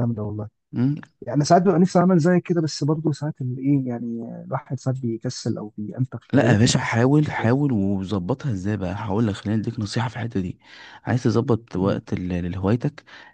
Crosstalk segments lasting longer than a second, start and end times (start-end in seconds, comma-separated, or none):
none